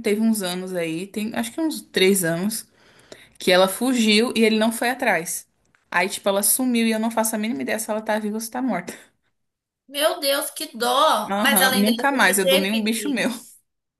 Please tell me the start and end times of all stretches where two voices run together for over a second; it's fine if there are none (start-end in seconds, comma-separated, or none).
11.3-13.2